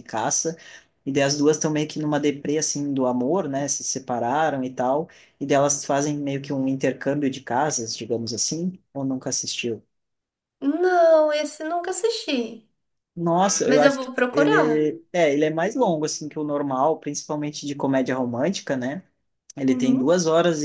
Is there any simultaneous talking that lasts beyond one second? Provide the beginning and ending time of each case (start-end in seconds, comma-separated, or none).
13.6-14.9